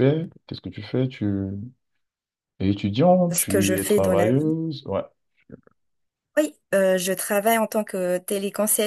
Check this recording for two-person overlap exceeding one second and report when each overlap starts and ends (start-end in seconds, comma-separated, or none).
3.3-4.5